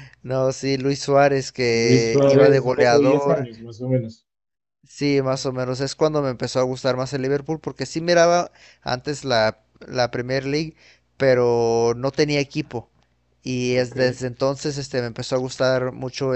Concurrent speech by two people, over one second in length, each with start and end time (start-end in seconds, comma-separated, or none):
1.7-3.5